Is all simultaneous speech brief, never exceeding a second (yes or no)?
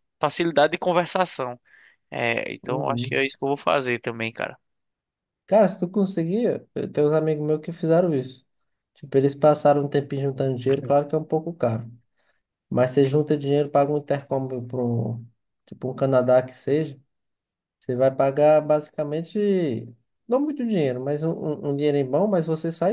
yes